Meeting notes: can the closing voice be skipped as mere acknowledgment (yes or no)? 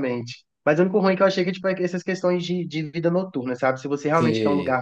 yes